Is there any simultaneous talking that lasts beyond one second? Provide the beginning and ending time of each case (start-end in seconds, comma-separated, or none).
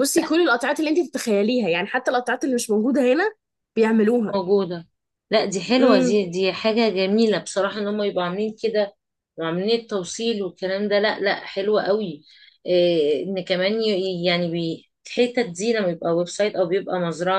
none